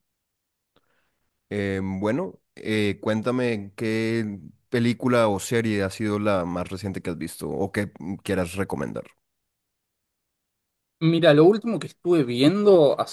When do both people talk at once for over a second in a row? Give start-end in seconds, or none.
none